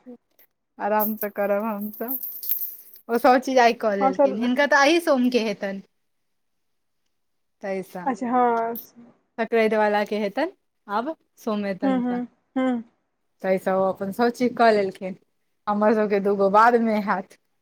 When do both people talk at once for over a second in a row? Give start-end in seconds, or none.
none